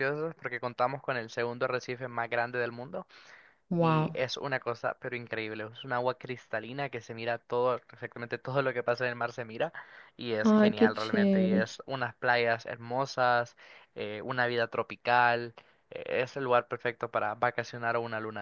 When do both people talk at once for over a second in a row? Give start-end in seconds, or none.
10.4-11.8